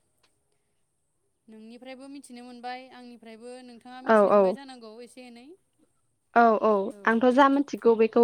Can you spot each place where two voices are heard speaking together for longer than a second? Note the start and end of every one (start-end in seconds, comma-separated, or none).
none